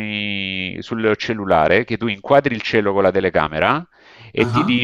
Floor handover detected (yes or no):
no